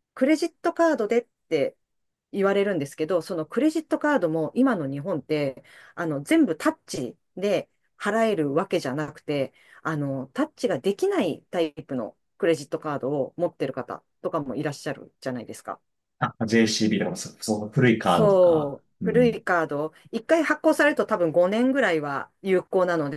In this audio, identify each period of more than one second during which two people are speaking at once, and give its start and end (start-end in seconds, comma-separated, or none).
18.0-19.4